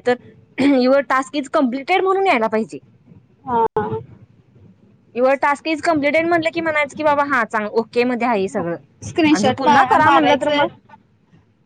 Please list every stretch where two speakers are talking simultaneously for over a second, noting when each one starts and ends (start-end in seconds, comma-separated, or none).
9.3-10.7